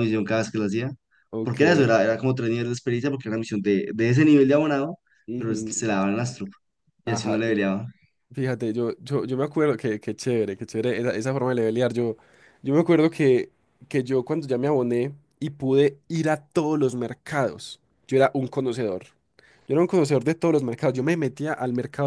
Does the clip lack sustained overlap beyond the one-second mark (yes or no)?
yes